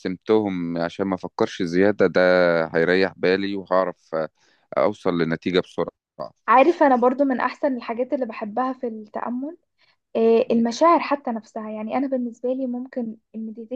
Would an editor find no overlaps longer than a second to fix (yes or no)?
yes